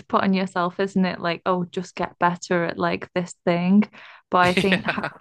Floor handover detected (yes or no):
no